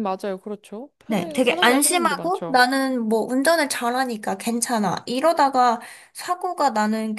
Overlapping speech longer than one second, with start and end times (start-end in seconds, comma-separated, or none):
1.1-2.6